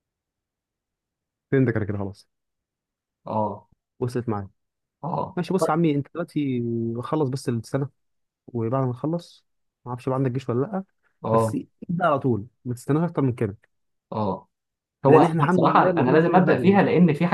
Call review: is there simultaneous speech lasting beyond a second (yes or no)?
yes